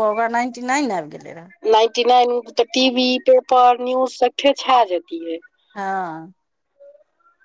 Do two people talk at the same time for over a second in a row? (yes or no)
no